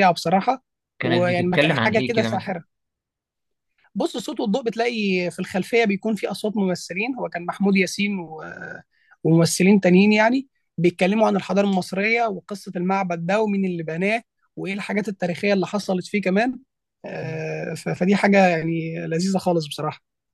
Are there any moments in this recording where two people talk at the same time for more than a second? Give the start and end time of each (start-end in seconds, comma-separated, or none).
1.0-2.5